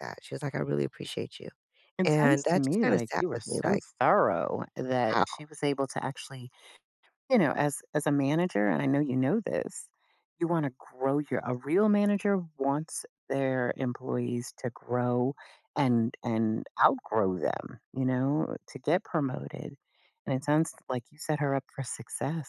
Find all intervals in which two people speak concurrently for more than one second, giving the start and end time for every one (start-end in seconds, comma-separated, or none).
2.0-3.8